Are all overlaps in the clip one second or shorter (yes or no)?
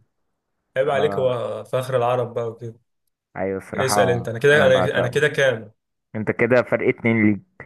no